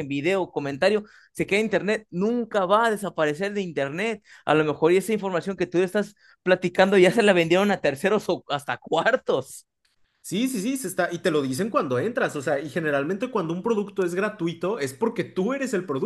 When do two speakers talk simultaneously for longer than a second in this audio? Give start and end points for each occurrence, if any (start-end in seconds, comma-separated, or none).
none